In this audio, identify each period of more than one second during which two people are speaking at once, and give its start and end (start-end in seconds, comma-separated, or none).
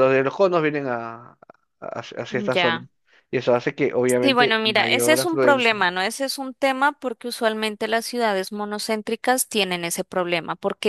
4.0-5.9